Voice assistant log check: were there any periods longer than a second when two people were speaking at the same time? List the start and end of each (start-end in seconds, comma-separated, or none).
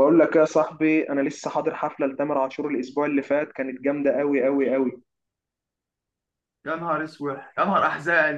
none